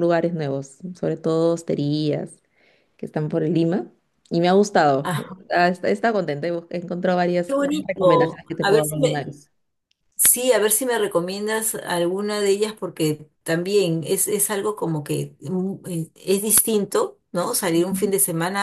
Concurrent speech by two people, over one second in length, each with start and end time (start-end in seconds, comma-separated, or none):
7.5-9.2